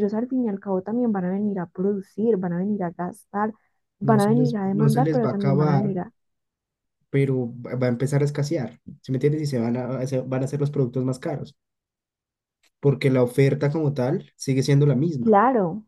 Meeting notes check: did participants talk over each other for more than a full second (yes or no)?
yes